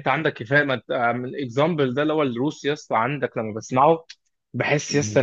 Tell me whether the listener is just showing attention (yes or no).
yes